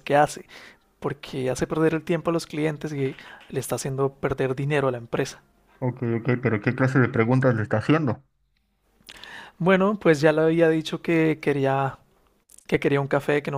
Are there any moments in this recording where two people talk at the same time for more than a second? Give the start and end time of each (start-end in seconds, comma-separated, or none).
none